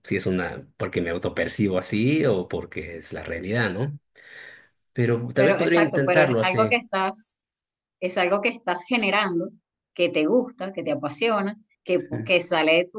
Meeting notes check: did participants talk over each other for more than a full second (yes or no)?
yes